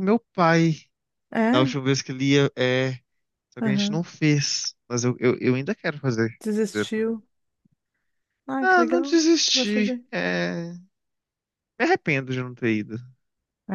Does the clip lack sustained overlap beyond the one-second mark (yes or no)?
no